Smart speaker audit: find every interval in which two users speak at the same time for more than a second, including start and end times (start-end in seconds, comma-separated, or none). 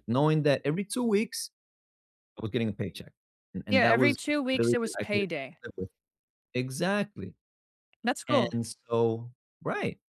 3.7-5.2